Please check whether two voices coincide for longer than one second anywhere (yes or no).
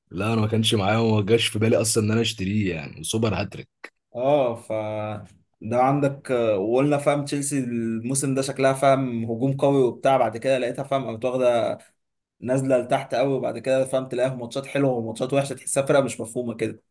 no